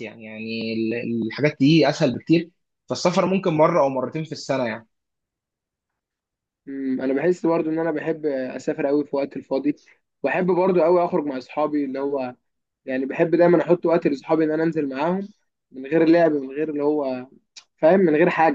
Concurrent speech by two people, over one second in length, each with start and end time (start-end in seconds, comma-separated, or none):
none